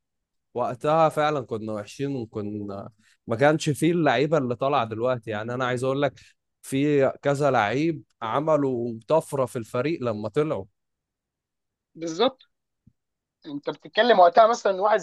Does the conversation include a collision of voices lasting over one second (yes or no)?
no